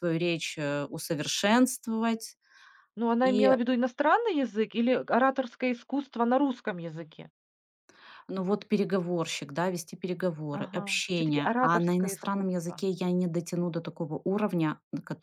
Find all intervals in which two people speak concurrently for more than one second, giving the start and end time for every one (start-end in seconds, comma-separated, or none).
10.5-12.9